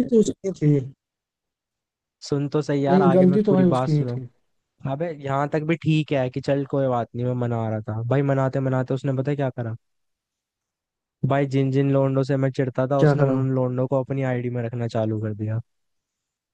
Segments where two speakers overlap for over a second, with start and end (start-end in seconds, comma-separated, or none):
2.9-4.2